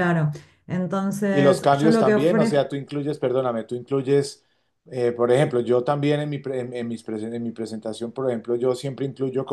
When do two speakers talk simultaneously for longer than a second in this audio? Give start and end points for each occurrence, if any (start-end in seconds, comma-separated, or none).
1.3-2.8